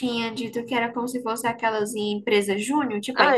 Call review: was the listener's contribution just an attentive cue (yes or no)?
no